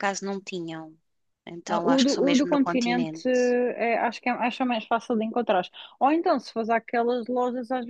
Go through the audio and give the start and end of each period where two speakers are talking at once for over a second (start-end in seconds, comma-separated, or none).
1.7-3.5